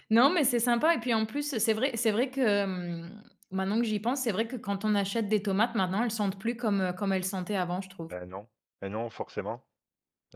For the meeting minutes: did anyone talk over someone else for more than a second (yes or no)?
no